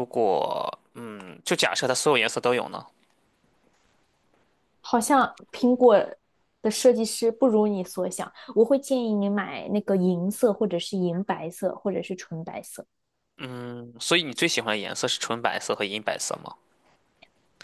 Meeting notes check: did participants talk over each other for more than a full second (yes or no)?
no